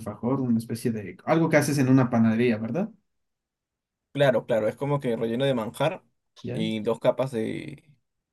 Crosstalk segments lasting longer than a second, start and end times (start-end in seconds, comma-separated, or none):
none